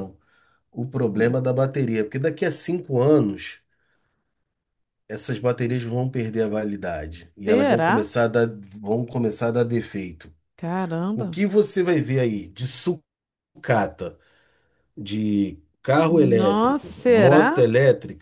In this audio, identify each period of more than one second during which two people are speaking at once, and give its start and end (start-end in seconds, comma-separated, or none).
16.1-17.6